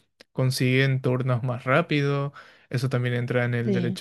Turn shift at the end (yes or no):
no